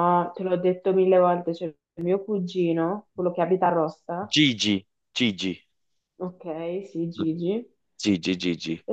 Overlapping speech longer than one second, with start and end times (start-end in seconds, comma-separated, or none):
none